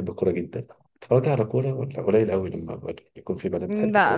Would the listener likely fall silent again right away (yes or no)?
no